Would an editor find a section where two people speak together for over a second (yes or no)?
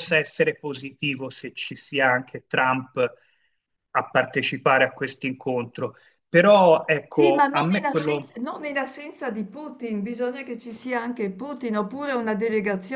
yes